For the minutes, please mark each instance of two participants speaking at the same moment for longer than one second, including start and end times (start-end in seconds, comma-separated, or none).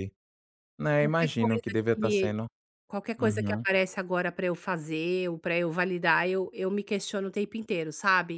1.0-2.4